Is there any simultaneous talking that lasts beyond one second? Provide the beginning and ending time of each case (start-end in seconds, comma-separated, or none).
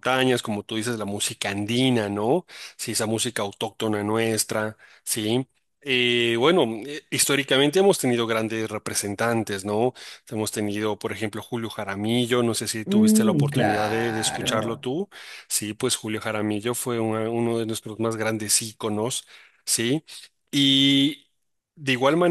12.9-14.8